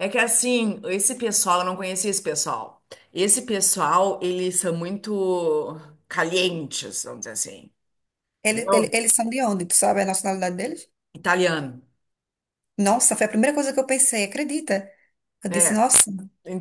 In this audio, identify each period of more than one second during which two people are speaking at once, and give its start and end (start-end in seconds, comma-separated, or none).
none